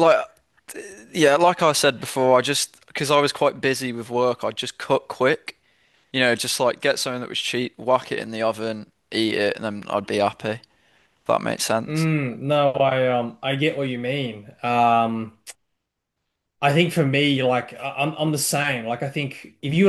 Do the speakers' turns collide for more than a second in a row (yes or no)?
no